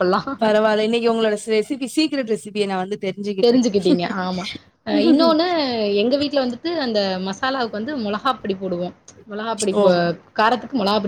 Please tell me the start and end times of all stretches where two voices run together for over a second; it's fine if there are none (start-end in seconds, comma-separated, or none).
none